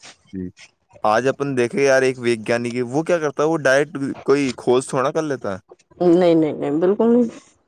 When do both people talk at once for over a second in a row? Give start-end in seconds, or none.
none